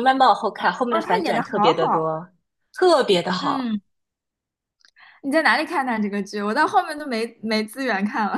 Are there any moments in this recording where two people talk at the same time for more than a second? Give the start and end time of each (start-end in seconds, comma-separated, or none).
0.9-2.1